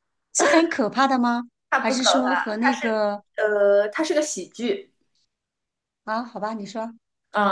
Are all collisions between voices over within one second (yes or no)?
no